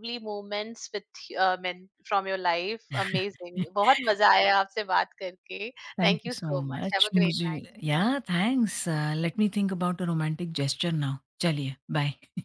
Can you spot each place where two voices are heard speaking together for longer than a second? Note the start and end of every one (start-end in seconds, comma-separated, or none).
6.0-7.6